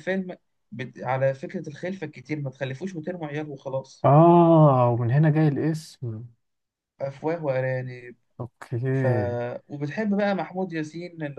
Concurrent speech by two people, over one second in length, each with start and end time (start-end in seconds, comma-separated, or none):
none